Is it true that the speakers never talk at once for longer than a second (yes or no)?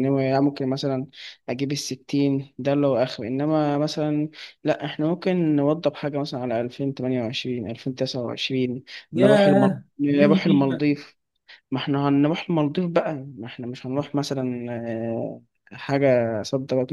no